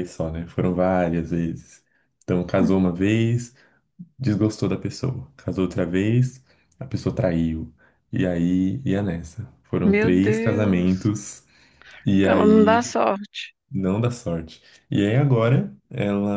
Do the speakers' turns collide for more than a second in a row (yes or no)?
yes